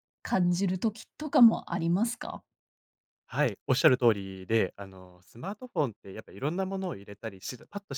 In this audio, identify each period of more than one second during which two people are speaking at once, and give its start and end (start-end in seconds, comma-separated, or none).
none